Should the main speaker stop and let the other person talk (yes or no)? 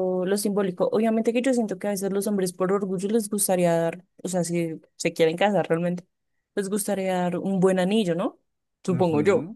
yes